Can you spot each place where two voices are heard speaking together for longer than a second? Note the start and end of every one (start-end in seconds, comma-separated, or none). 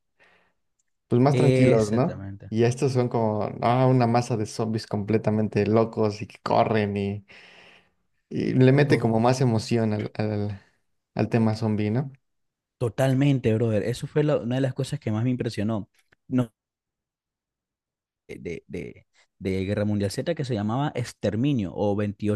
1.3-2.5